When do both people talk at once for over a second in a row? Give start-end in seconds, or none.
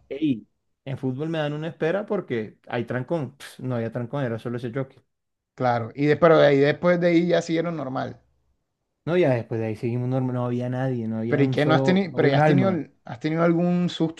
11.3-12.8